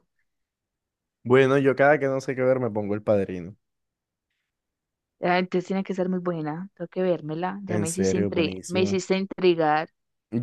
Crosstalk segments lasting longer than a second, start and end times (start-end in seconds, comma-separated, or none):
7.7-9.0